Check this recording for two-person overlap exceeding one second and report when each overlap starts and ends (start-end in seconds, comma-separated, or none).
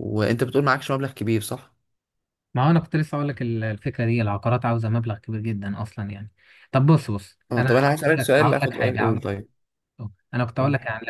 7.5-9.2